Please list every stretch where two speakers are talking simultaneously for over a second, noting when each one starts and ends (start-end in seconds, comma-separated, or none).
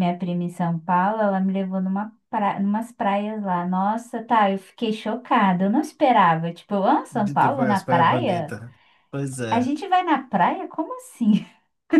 7.1-8.6